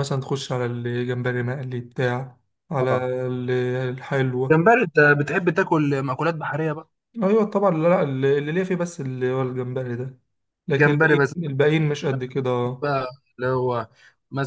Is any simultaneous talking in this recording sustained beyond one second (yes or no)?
no